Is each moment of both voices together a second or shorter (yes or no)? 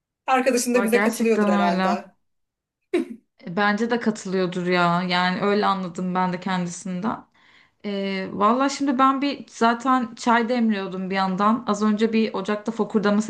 no